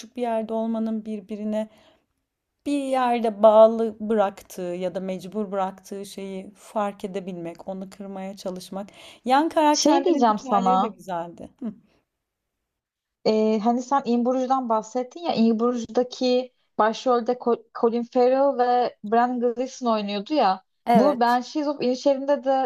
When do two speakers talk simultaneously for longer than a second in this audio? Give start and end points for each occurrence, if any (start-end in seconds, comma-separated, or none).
9.7-10.9